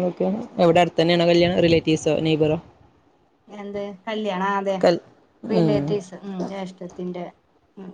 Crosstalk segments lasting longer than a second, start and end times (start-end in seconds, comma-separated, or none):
none